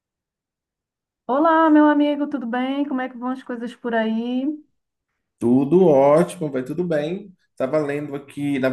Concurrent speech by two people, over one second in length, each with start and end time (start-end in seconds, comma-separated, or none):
none